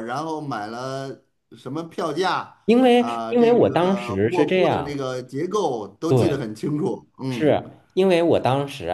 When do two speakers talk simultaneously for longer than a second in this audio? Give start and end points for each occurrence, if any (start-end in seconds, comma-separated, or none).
2.9-5.0